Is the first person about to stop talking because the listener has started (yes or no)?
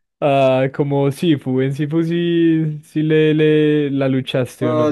yes